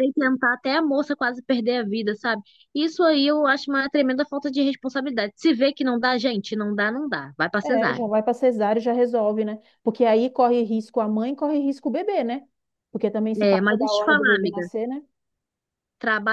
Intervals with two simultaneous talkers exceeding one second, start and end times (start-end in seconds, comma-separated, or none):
13.4-14.6